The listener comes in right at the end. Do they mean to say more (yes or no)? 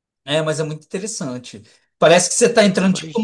no